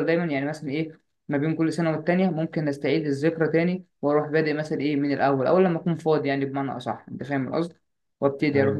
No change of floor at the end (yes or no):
yes